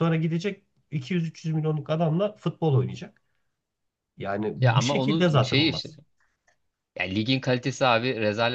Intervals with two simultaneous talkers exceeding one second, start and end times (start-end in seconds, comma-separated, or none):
4.6-5.9